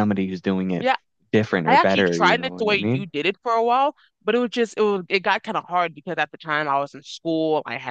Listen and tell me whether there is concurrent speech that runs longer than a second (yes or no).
yes